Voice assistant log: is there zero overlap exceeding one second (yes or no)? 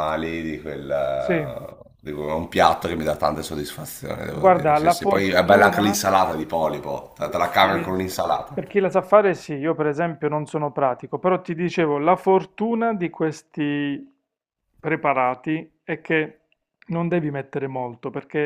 no